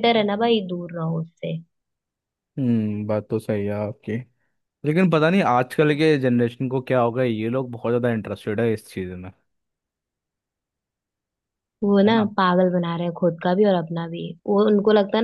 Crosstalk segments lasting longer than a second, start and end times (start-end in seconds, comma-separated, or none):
none